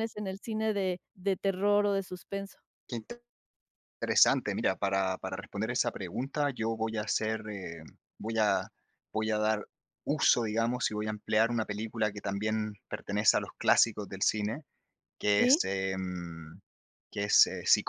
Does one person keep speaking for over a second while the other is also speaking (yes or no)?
no